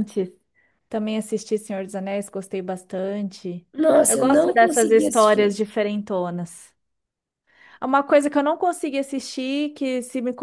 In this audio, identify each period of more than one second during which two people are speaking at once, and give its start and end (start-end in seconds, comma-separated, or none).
4.1-5.5